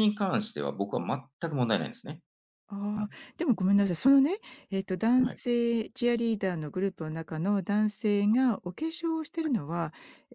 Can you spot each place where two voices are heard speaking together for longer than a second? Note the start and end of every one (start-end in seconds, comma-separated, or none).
none